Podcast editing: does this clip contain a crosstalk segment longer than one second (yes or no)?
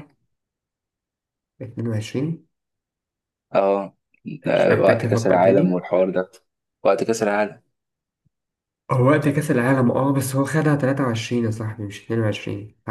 yes